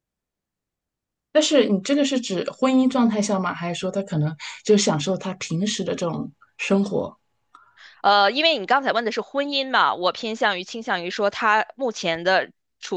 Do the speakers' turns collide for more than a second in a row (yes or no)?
no